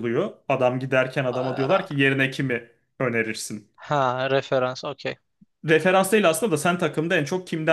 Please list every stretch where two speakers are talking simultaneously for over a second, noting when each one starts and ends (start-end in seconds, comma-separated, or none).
none